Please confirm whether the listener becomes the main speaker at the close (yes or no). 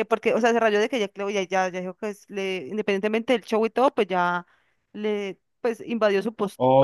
yes